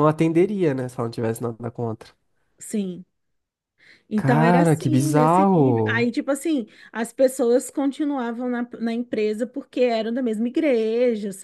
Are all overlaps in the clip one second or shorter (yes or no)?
no